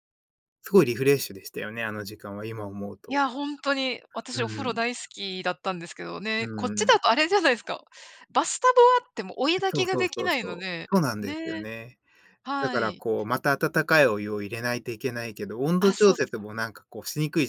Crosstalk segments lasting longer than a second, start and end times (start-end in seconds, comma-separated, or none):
9.7-11.7